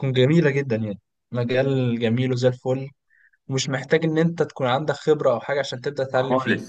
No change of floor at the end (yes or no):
no